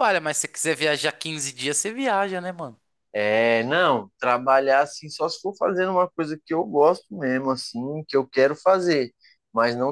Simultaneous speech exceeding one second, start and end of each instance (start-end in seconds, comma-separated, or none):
none